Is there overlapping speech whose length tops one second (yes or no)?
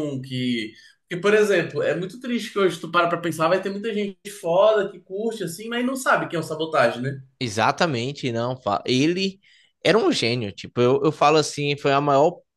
no